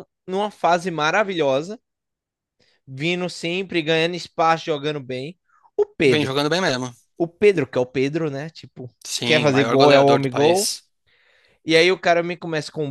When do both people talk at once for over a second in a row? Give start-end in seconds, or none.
9.2-10.7